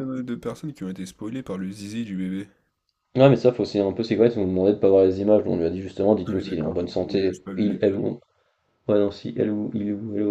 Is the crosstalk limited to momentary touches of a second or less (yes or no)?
no